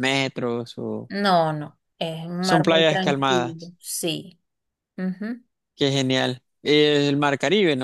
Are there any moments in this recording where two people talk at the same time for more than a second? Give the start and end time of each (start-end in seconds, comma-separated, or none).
2.4-3.7